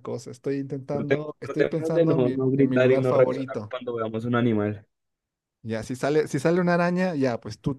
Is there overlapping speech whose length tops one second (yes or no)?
yes